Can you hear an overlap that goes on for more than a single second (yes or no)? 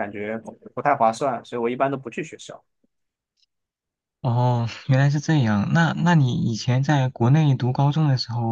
no